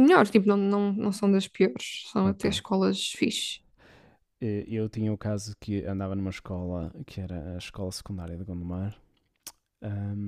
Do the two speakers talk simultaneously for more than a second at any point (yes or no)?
no